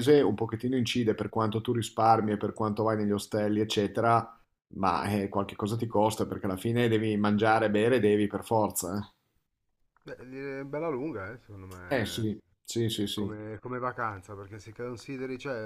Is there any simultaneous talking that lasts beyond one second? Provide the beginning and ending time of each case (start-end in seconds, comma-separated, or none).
none